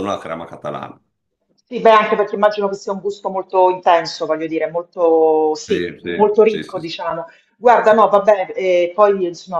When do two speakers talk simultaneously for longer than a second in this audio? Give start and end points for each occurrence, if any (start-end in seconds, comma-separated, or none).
5.7-6.9